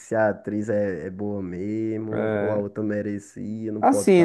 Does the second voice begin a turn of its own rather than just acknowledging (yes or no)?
yes